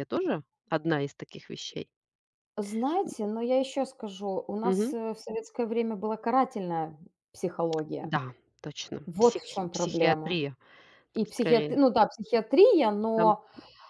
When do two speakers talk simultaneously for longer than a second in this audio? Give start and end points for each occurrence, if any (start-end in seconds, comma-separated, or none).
9.1-10.4